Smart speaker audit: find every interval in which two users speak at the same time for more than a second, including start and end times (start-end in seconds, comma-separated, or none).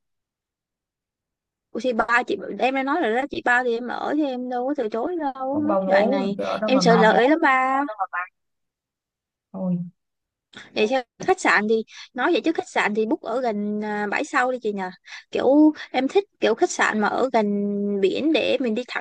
5.5-7.2